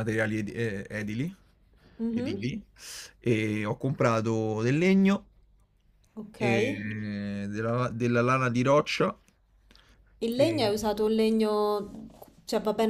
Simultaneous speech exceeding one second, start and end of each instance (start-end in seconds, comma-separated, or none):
none